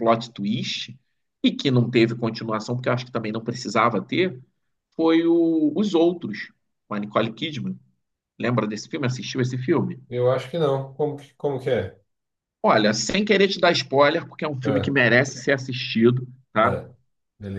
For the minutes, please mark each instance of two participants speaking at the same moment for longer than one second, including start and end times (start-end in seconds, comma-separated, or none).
none